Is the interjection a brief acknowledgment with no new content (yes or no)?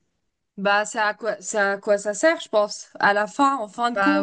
yes